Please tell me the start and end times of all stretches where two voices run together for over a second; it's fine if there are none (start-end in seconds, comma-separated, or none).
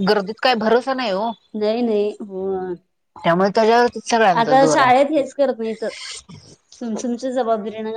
none